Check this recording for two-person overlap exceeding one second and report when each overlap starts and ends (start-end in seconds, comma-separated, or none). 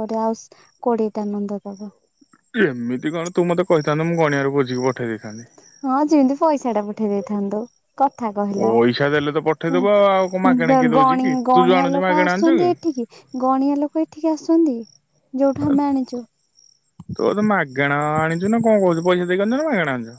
9.8-12.7